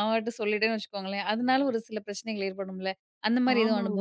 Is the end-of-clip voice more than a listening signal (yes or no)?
yes